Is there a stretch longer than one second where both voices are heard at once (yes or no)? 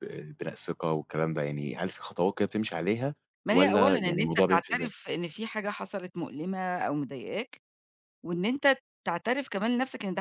yes